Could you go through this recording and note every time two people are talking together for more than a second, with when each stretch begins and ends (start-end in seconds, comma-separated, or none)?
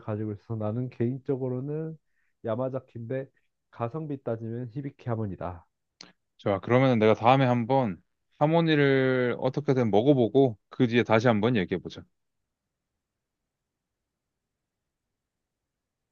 none